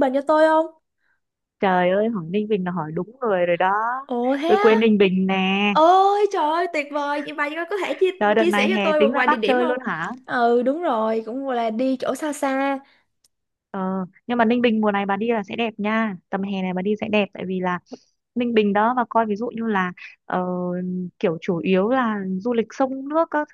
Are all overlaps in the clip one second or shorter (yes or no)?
no